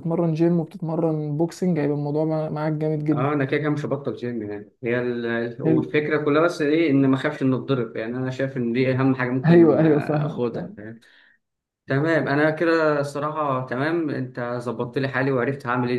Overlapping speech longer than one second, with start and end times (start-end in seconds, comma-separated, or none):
9.4-10.8